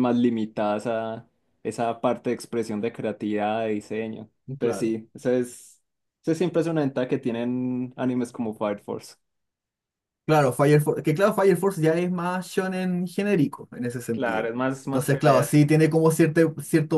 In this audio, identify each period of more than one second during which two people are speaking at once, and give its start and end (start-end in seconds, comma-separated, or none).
14.1-15.7